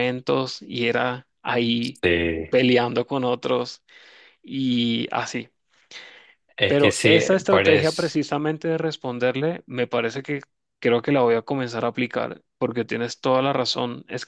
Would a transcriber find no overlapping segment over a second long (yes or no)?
no